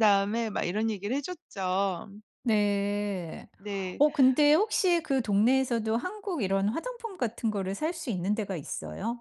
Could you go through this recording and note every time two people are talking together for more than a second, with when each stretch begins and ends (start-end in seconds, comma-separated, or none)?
none